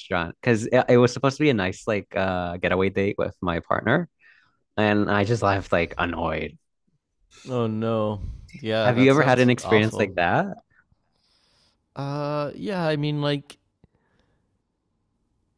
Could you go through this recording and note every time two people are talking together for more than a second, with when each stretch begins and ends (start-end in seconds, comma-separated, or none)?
8.8-10.1